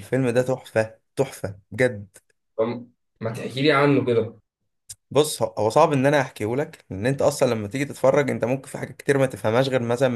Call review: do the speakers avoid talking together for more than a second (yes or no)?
yes